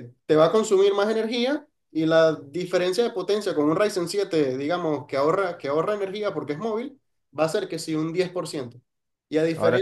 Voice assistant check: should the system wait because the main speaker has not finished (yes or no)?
yes